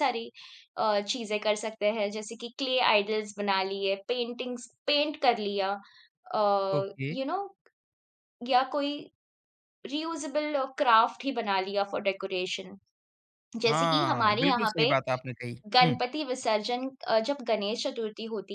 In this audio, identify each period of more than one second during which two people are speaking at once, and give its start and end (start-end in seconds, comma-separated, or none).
13.7-14.9